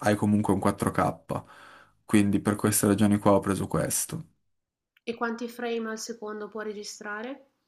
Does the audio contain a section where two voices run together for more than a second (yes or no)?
no